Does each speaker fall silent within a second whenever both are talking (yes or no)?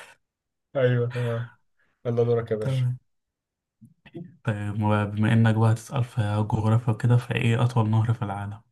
yes